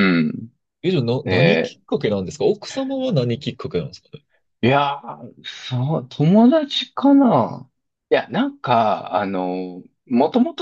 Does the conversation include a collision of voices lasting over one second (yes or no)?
no